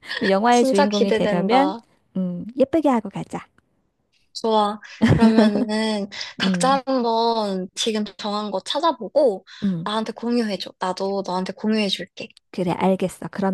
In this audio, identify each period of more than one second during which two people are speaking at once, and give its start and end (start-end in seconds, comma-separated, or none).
0.5-1.7